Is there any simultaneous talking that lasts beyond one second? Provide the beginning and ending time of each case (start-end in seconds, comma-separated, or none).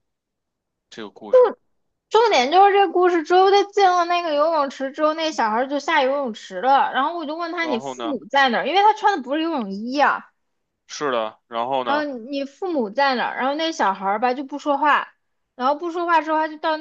none